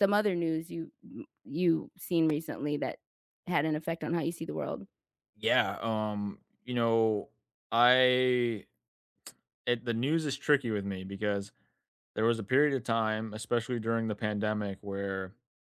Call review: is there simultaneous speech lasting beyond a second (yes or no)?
no